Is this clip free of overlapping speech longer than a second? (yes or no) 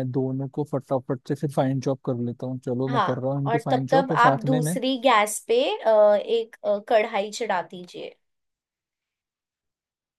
no